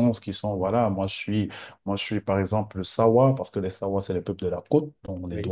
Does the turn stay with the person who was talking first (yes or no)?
yes